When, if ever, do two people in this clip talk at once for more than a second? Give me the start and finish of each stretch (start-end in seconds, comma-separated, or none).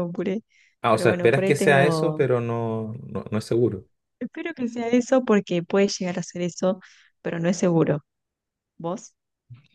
0.9-2.3